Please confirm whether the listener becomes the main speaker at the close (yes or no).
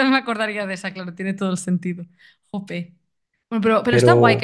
no